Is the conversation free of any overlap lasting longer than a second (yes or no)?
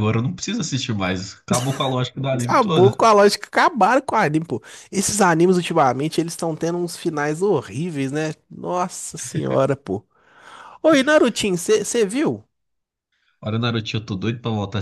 yes